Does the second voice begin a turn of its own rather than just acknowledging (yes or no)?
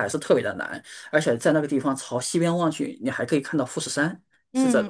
yes